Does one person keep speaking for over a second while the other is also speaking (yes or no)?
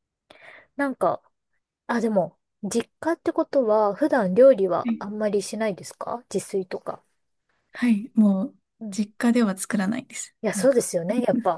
no